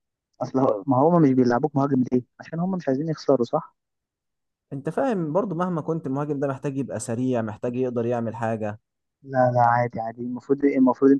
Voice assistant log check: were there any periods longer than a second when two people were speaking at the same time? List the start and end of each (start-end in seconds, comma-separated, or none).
none